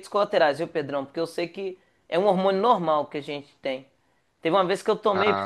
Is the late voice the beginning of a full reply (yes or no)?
no